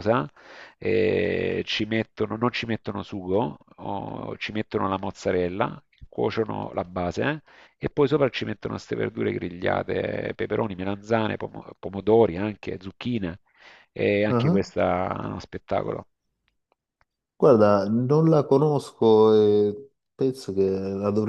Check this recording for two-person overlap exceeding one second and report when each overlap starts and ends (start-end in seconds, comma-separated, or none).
none